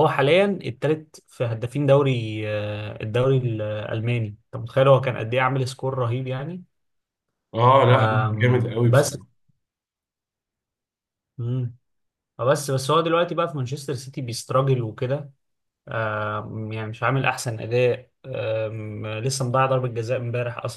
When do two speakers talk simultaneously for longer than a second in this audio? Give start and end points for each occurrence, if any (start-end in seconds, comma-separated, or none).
7.9-9.2